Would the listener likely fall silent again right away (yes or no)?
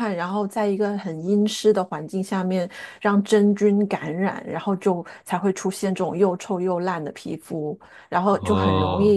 yes